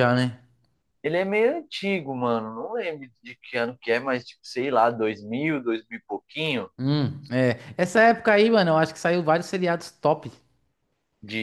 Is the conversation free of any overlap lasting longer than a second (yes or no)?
yes